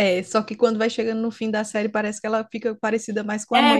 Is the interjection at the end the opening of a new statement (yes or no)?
yes